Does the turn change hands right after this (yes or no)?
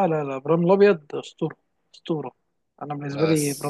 no